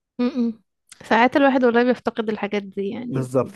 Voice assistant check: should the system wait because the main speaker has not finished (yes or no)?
yes